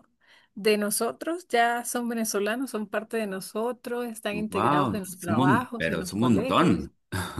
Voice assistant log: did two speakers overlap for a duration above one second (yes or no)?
yes